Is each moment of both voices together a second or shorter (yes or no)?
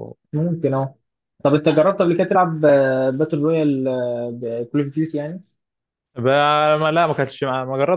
yes